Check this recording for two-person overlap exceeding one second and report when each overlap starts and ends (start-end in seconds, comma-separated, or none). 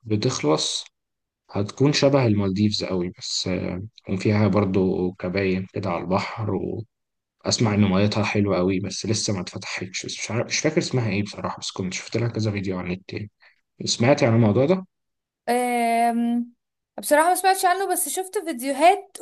none